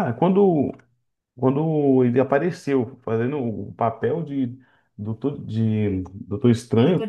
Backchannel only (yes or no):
yes